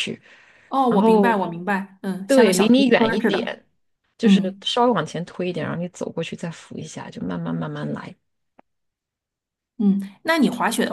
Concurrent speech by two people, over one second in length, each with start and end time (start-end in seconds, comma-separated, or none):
2.3-3.6